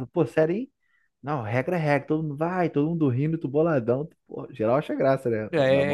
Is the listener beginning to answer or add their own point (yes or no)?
yes